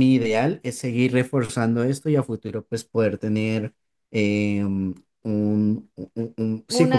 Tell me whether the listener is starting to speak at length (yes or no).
yes